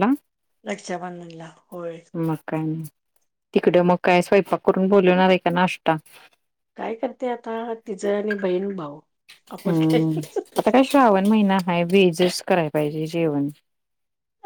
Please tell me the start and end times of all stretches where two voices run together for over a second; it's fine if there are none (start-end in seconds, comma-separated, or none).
none